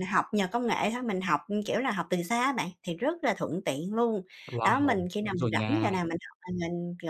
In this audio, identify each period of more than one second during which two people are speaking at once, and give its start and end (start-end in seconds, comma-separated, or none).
4.6-6.0